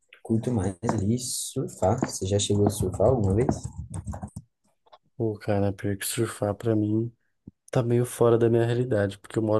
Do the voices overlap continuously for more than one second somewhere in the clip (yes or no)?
no